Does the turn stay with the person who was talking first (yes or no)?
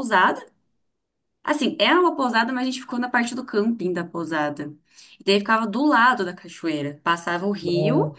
yes